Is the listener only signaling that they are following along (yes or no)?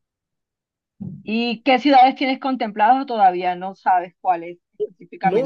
no